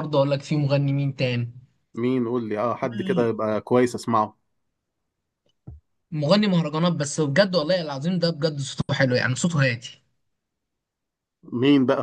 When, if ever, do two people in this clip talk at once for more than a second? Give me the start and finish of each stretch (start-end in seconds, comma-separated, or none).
none